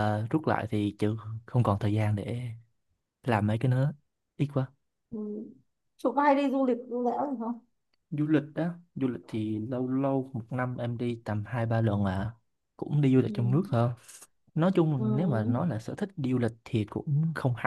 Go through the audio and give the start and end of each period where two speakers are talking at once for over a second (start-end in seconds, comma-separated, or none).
none